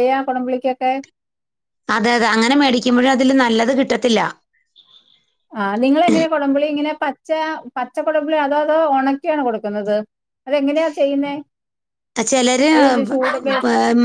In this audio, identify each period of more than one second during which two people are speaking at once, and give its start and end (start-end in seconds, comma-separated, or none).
none